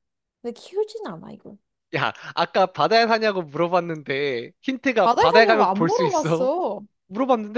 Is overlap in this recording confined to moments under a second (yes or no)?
no